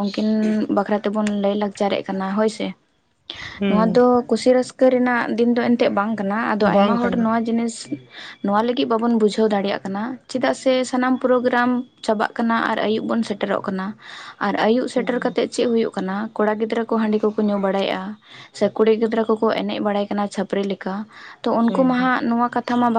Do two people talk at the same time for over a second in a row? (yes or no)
no